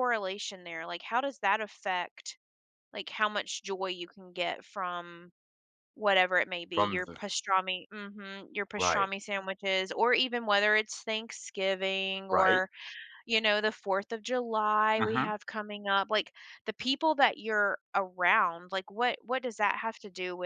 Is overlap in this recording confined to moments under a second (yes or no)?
yes